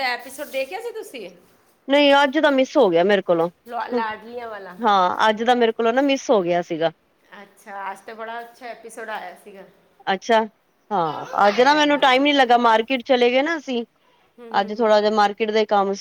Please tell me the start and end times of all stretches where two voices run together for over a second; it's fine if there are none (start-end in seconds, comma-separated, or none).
10.9-12.8